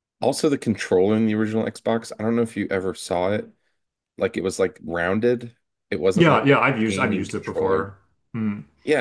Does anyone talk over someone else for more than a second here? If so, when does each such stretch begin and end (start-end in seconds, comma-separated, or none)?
6.1-7.9